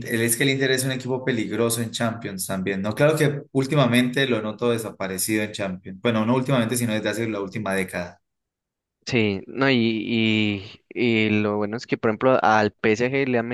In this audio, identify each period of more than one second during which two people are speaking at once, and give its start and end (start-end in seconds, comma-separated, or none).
none